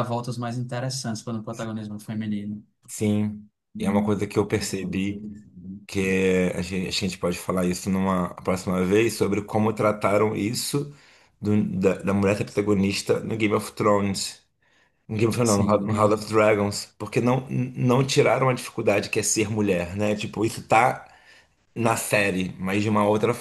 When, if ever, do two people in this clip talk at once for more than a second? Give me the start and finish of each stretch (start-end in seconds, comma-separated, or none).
none